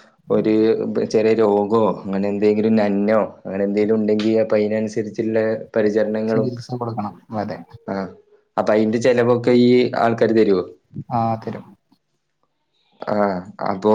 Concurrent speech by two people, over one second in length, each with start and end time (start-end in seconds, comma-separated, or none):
none